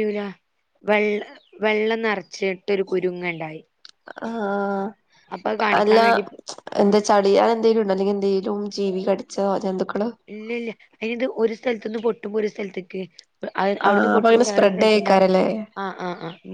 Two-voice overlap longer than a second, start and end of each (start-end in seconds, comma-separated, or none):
13.9-15.2